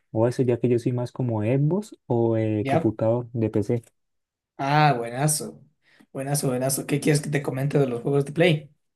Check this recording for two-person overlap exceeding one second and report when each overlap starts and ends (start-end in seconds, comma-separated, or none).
none